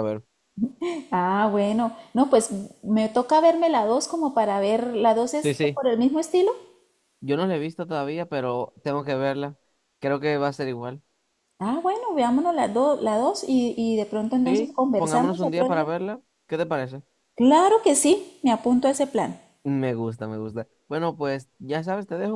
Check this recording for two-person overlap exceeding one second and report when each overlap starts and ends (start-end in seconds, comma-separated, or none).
14.4-15.8